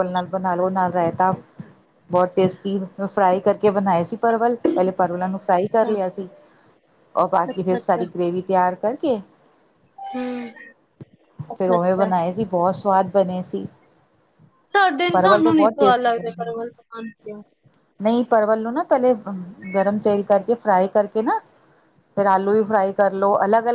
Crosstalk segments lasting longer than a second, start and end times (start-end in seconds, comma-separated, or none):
15.1-16.5